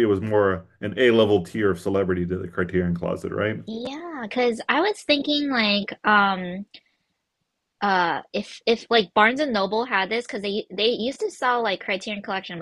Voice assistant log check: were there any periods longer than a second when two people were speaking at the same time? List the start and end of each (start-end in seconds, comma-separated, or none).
none